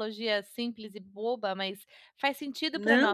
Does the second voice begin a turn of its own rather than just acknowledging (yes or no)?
yes